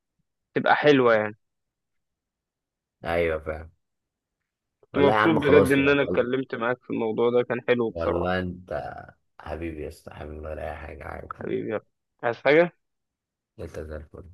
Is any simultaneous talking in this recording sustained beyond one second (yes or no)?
yes